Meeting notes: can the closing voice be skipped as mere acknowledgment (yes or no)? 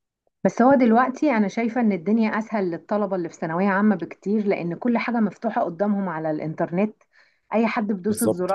yes